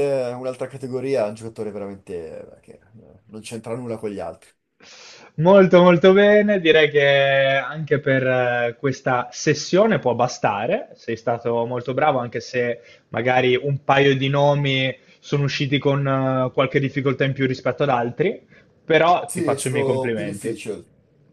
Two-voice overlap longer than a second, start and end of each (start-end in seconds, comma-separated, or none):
19.2-20.6